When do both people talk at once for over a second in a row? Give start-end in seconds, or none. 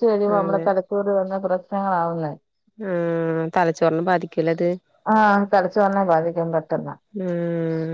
none